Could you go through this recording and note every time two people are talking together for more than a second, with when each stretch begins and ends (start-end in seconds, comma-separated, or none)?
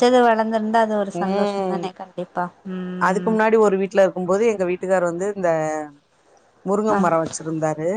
none